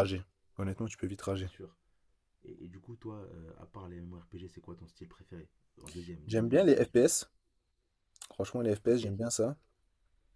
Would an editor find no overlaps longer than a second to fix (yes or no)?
yes